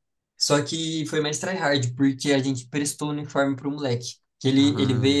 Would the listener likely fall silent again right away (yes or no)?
yes